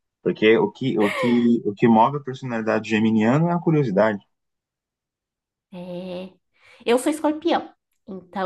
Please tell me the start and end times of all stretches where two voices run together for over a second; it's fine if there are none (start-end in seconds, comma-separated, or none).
none